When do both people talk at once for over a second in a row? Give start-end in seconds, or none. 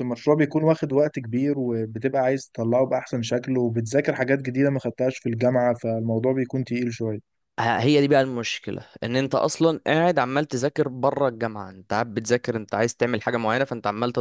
none